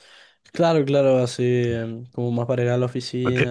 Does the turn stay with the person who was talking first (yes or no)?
yes